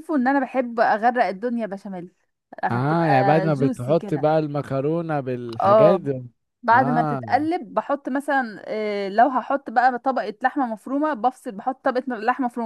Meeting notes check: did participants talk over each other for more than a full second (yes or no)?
yes